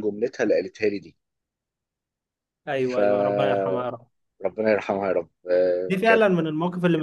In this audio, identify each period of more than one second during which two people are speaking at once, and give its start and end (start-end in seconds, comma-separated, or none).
2.8-4.1